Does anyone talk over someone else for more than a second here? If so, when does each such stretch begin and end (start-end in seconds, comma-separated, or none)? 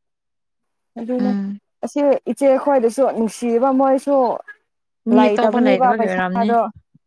5.2-6.5